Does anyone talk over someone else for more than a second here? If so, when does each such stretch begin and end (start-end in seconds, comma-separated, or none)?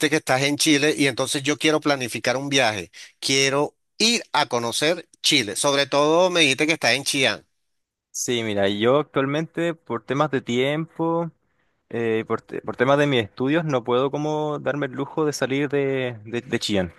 none